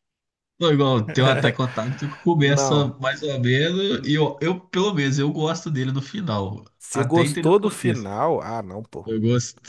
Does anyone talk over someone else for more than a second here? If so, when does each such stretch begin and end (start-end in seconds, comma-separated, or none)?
6.8-8.1